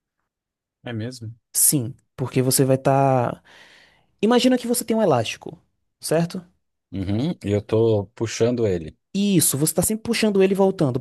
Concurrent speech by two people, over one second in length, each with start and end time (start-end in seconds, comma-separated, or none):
none